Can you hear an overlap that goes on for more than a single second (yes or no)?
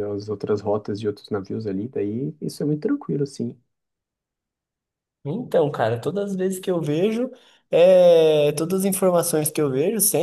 no